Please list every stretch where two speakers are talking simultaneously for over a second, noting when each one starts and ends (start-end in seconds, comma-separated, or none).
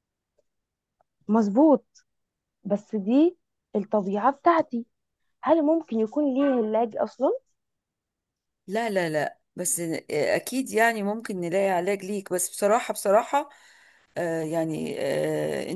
none